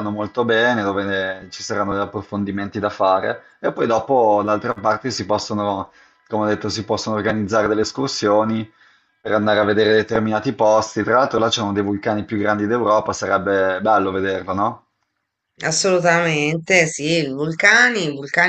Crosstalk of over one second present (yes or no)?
no